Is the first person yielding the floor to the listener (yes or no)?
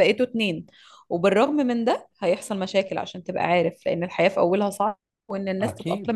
no